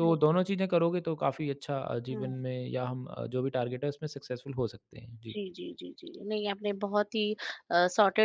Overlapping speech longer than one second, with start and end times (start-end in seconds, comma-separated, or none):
none